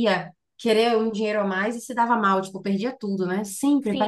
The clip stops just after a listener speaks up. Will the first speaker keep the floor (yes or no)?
no